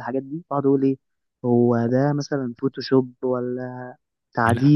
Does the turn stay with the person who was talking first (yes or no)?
yes